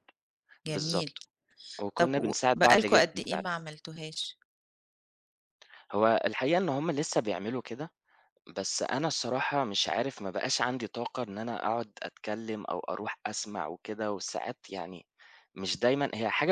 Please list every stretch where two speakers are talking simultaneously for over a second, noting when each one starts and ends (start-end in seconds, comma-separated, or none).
1.9-3.4